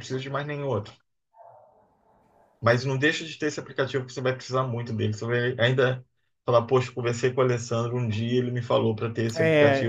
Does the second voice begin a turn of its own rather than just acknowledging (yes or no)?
yes